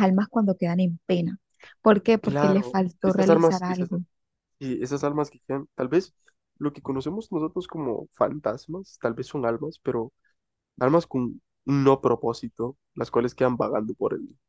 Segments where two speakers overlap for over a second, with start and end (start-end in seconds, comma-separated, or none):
2.2-3.9